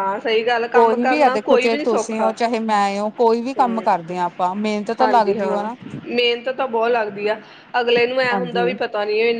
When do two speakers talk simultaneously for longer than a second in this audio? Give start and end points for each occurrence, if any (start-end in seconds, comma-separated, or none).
0.8-2.3